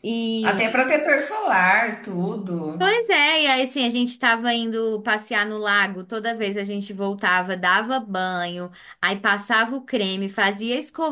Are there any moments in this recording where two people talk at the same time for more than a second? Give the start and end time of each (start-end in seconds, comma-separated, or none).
none